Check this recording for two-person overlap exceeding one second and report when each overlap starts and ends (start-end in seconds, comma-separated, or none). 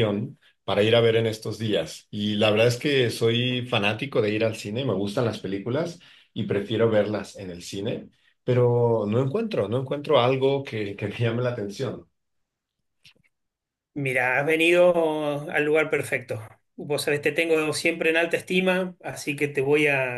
none